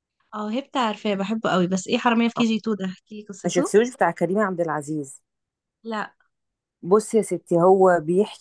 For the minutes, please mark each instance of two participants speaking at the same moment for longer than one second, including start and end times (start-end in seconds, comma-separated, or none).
none